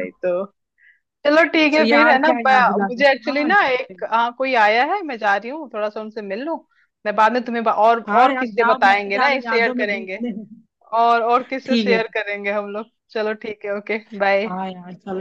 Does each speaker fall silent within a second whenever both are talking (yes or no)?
no